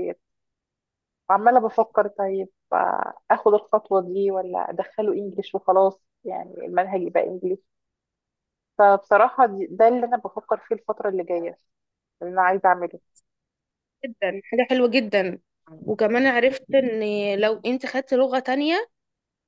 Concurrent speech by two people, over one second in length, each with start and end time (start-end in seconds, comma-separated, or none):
none